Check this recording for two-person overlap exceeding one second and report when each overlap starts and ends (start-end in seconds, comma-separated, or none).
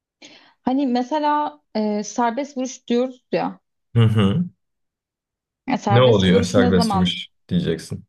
5.9-7.1